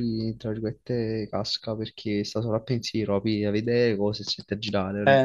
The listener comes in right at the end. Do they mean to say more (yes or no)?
yes